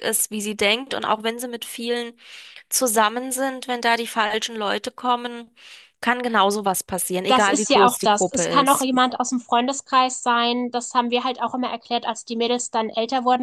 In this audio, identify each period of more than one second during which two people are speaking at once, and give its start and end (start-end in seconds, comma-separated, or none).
7.3-8.9